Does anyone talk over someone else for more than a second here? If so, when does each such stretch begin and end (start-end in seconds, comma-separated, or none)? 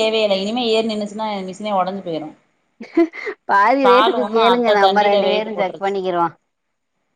4.5-6.0